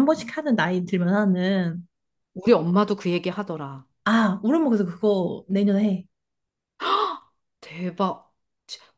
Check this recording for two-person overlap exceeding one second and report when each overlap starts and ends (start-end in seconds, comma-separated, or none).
none